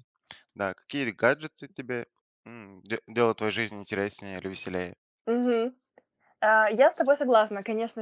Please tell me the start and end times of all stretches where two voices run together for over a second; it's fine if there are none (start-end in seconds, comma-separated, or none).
none